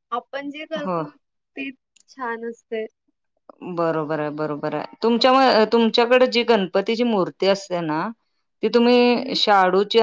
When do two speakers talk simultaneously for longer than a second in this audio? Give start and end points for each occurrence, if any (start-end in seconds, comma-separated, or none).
none